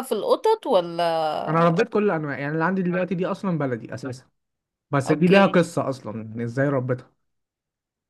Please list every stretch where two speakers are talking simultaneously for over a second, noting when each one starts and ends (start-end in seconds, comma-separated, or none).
none